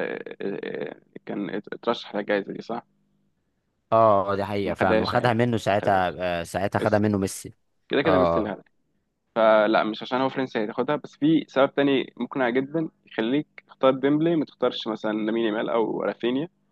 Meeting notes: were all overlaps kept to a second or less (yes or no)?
no